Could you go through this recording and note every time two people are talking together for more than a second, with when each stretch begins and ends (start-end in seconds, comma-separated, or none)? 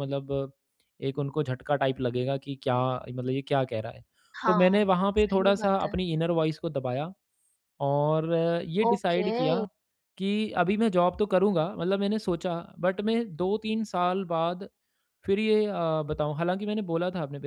4.5-5.9